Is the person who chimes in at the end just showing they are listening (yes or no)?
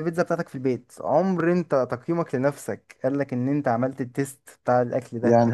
no